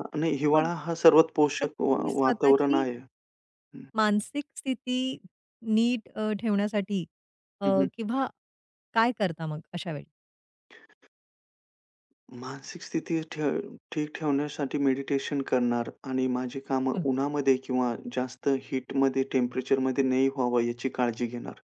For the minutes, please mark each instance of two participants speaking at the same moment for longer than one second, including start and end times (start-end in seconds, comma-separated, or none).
1.6-2.9